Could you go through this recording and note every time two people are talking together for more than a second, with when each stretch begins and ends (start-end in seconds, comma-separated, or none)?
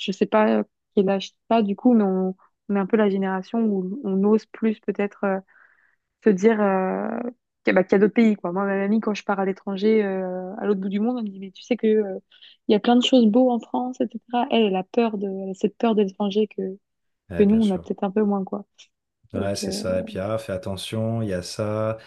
none